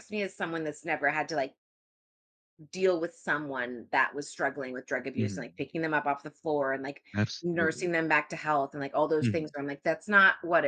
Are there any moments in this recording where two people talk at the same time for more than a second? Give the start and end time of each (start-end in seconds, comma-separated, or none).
none